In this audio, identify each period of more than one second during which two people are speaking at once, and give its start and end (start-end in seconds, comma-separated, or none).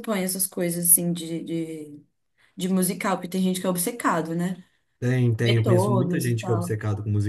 5.4-6.8